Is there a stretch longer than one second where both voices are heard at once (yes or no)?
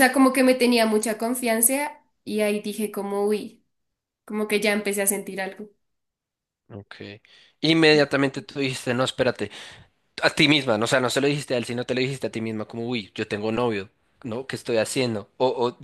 no